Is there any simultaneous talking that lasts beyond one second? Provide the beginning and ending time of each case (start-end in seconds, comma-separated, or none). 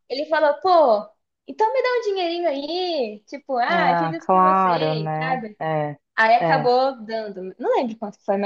3.7-5.6